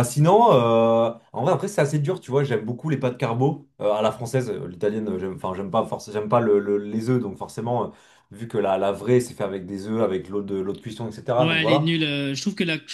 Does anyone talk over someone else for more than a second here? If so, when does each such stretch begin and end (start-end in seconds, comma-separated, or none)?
none